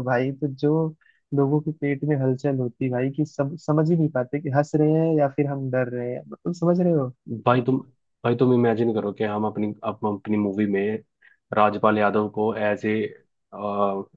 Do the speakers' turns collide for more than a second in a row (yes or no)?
no